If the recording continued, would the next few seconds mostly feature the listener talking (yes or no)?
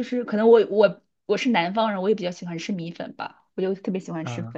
no